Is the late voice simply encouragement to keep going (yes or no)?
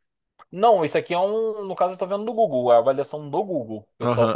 no